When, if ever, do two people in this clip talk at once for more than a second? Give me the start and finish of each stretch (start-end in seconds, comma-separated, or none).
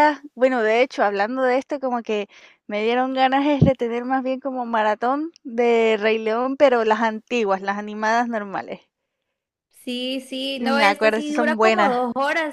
10.5-12.0